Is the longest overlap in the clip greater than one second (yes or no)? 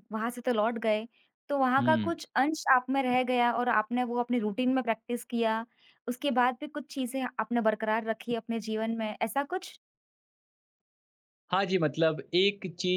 no